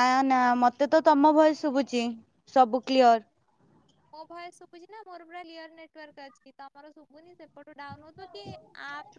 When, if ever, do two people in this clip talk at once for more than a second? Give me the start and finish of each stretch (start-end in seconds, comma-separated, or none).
none